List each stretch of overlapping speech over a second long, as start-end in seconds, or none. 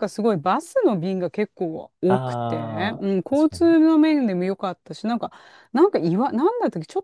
2.1-3.8